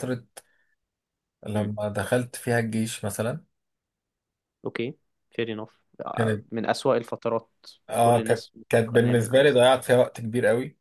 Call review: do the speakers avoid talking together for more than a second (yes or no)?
no